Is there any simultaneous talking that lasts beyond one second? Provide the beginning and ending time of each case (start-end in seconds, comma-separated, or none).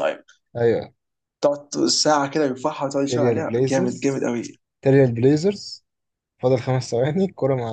3.0-4.3